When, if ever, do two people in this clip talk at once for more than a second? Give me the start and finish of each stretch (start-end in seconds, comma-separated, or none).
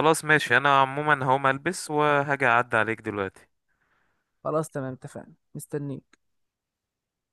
none